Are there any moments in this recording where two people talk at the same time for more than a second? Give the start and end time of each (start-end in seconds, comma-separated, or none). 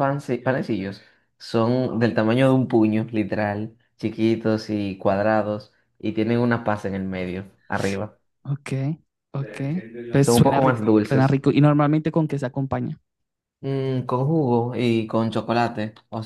10.2-11.4